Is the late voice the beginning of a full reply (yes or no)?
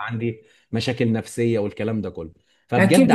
yes